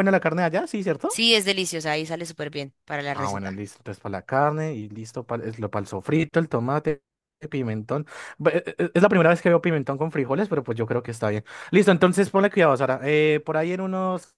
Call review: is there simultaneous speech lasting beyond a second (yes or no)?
no